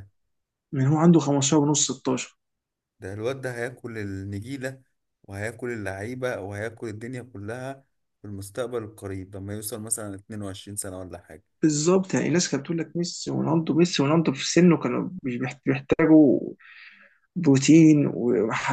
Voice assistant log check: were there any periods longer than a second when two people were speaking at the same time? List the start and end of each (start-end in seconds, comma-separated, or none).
none